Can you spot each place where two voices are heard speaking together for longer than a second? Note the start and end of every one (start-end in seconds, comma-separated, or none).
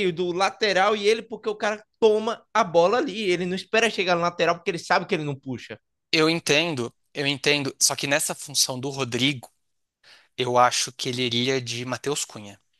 none